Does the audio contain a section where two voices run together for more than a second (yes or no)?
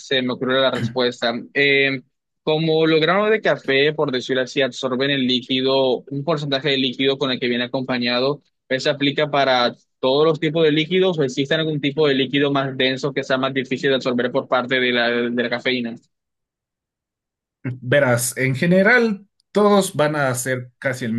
no